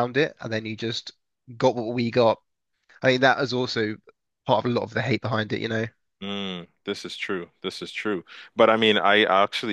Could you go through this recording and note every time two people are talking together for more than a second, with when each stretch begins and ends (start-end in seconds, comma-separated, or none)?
none